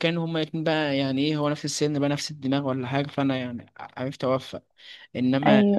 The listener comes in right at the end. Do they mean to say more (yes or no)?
no